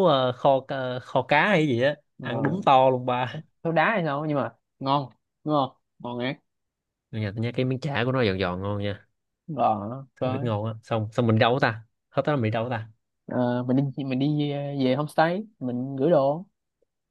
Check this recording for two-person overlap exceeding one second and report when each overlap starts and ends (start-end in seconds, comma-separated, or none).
none